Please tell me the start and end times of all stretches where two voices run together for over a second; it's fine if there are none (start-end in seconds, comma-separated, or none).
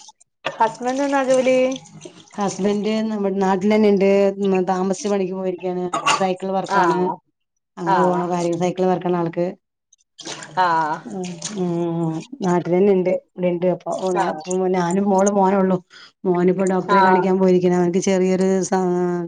none